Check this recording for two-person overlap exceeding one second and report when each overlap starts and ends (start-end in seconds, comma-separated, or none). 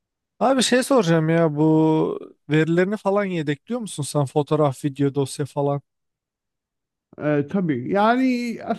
none